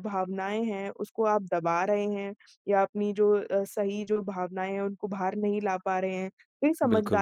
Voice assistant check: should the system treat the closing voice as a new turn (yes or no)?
no